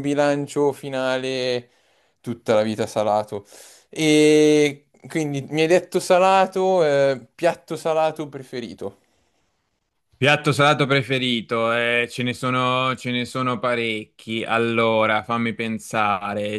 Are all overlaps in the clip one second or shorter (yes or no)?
yes